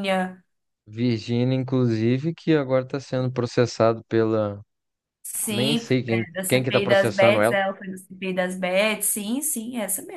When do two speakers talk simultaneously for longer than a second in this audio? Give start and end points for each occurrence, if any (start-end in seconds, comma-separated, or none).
5.5-7.6